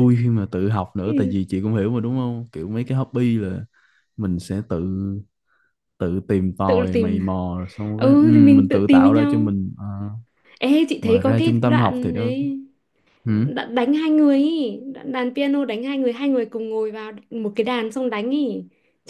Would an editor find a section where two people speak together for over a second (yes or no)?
yes